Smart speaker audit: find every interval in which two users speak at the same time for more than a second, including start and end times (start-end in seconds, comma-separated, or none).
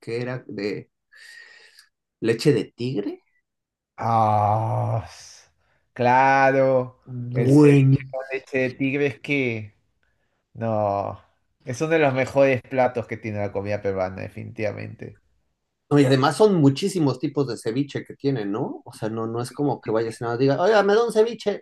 none